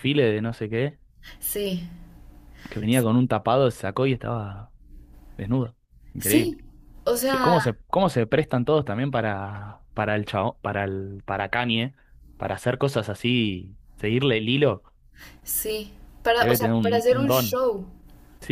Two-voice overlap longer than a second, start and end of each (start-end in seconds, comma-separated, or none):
16.4-17.6